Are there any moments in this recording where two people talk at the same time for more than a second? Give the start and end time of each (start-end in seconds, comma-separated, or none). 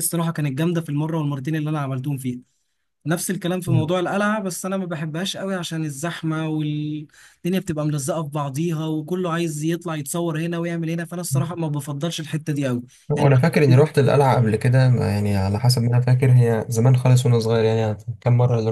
none